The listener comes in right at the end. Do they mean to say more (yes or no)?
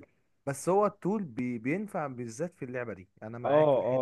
yes